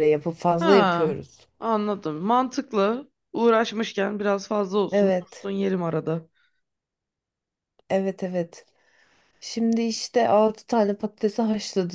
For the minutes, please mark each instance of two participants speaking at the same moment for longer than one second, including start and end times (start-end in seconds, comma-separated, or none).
none